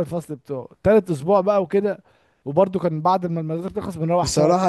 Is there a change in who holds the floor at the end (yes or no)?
yes